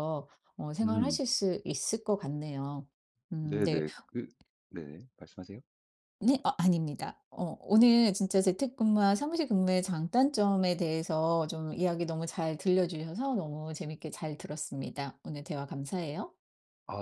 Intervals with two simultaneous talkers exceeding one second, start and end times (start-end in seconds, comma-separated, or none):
none